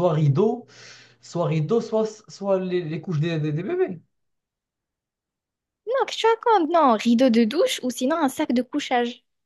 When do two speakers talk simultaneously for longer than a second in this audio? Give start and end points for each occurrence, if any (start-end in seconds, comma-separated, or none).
none